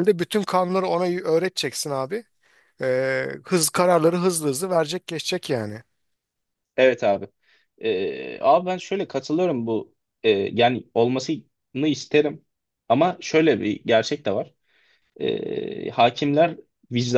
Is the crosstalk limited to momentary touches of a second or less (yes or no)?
yes